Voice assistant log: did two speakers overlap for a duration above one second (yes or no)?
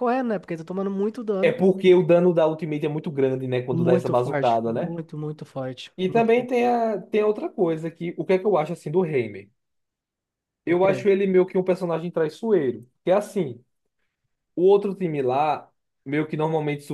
yes